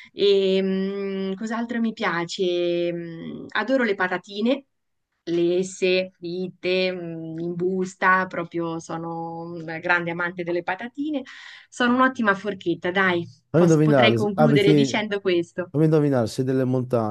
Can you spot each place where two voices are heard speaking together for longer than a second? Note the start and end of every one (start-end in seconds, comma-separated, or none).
13.5-14.9